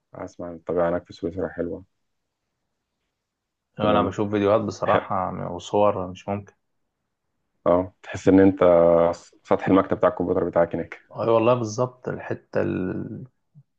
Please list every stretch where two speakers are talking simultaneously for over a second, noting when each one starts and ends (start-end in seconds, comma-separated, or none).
none